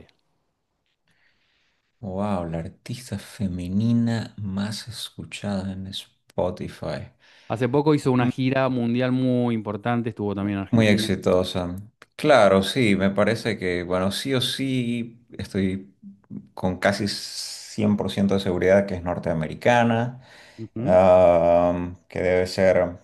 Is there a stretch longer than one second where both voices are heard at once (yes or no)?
no